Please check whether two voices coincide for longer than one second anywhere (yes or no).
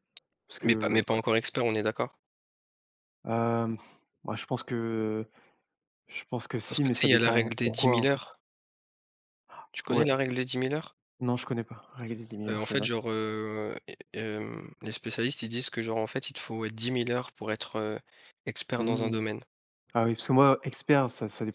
yes